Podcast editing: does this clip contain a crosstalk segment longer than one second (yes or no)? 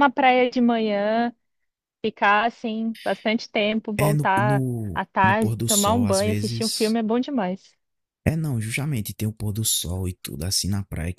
yes